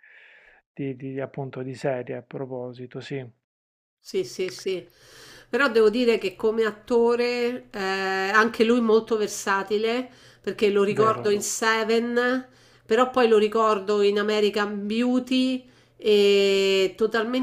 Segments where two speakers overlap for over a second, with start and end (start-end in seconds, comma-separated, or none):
none